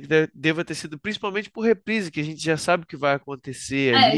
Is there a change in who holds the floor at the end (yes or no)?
yes